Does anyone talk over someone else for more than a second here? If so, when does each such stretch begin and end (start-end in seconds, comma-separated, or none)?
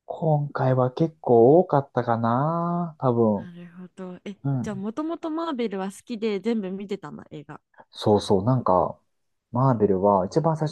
none